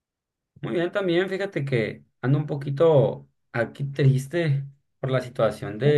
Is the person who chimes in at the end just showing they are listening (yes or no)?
yes